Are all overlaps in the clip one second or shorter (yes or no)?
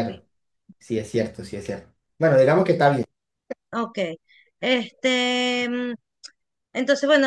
yes